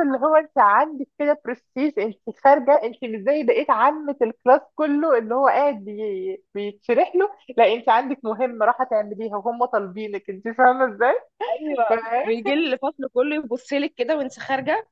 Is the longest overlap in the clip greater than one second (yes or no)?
no